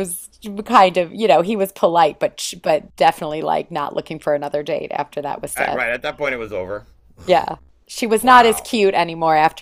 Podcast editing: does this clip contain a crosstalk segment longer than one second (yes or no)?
no